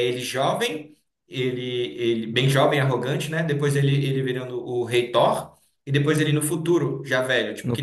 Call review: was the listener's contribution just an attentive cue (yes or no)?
no